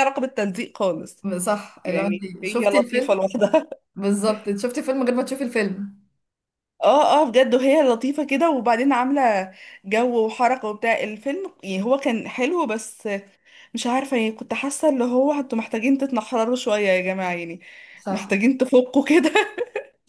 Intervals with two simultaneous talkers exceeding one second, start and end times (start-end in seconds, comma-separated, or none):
1.8-3.2